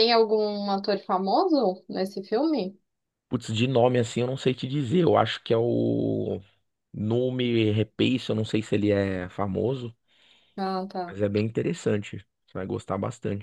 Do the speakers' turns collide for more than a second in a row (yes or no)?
no